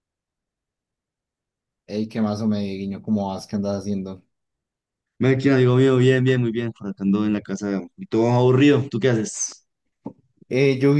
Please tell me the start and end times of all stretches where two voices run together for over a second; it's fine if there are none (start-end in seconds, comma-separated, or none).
none